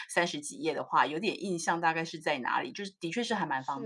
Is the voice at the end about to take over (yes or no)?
yes